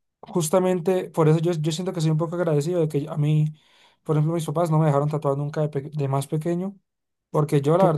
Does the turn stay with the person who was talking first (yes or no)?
yes